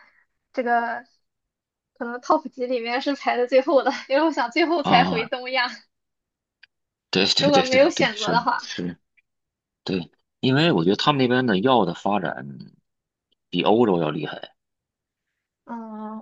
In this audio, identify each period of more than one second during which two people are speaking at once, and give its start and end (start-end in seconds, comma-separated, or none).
7.4-8.7